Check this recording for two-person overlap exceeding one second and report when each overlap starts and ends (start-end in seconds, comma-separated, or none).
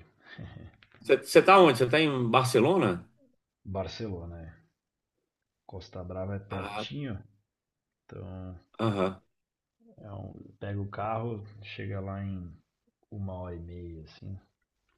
none